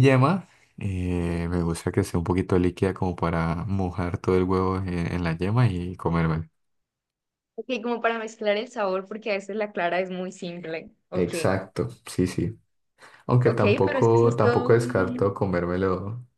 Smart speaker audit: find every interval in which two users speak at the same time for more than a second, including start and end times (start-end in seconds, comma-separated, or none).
13.4-15.4